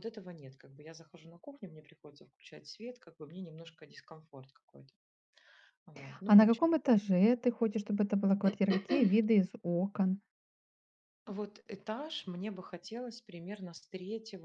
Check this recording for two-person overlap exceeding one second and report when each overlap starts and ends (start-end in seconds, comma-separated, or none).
none